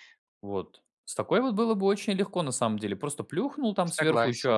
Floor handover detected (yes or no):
no